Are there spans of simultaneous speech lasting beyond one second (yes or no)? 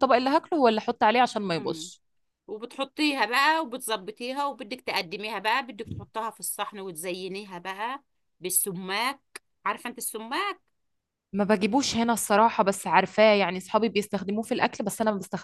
no